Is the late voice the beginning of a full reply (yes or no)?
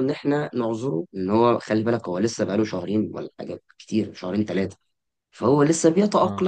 no